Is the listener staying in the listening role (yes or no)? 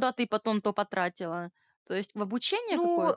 no